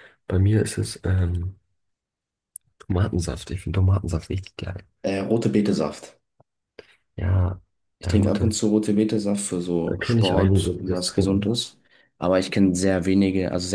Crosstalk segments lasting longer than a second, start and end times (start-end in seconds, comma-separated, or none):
9.8-11.5